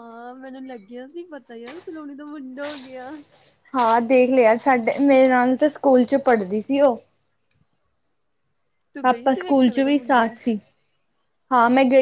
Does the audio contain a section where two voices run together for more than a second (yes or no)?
yes